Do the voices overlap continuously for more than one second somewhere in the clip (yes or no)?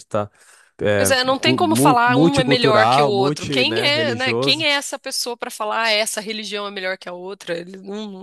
yes